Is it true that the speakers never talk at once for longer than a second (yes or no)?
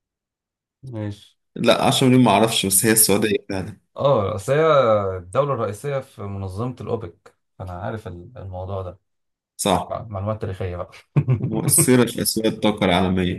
yes